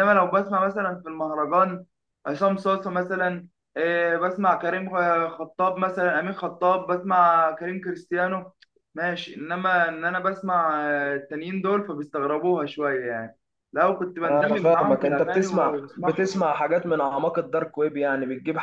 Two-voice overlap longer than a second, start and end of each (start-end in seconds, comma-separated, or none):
14.2-16.3